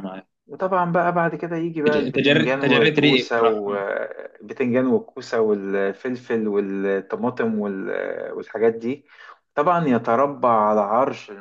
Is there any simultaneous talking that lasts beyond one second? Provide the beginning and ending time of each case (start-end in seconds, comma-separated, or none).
1.9-3.8